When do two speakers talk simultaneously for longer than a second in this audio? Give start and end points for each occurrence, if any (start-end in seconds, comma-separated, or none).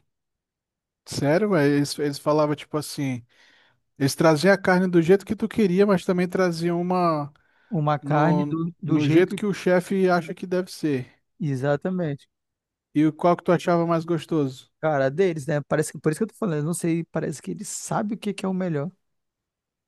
8.0-9.4